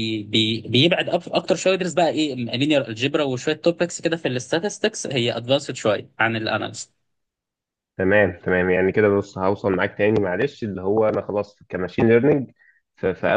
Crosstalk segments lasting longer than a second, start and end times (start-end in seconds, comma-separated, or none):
none